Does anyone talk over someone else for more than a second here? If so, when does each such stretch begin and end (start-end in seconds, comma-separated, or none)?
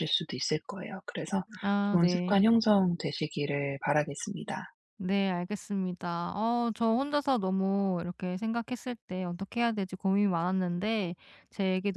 none